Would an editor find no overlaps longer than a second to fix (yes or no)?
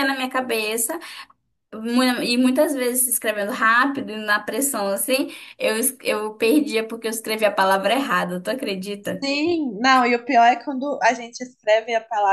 yes